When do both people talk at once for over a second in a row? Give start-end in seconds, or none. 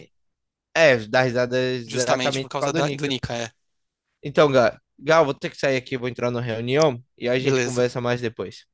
1.9-3.1